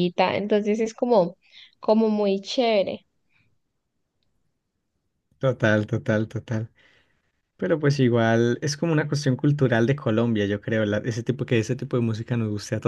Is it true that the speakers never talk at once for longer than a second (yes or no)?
yes